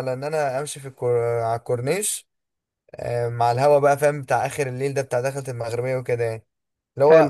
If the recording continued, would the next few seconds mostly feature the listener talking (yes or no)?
no